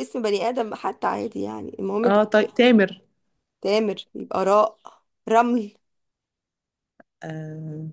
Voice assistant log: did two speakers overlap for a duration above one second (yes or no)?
no